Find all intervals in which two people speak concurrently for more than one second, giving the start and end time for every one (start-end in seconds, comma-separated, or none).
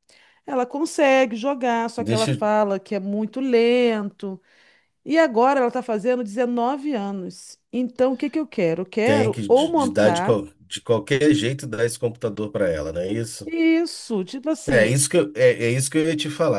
9.0-10.4